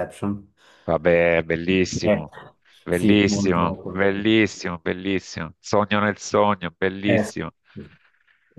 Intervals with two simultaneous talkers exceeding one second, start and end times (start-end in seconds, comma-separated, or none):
2.9-4.2